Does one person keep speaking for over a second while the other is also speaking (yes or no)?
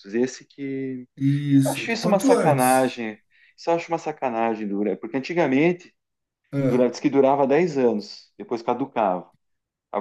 yes